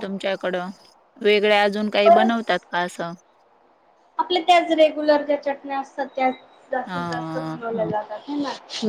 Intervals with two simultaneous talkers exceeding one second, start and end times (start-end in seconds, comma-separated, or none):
none